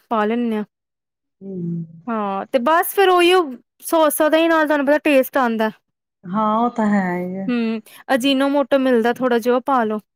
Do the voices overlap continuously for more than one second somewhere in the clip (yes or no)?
no